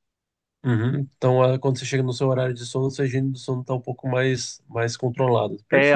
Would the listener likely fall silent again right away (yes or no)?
no